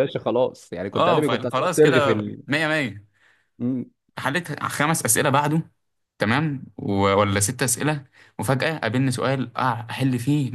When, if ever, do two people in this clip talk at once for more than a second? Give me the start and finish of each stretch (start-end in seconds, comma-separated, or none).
0.9-2.4